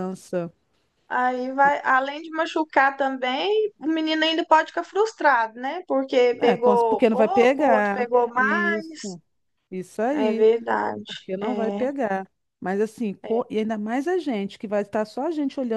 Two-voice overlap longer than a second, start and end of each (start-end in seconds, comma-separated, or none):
6.4-9.0